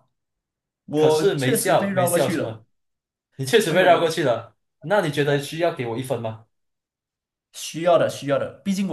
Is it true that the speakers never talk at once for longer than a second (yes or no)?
no